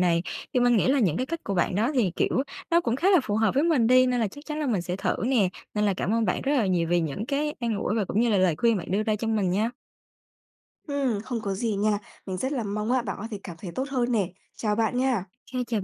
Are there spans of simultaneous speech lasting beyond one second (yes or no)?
no